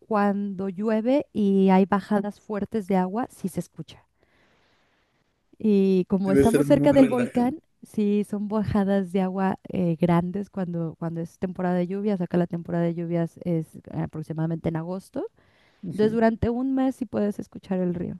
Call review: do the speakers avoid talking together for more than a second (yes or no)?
no